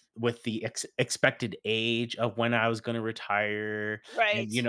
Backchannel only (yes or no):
yes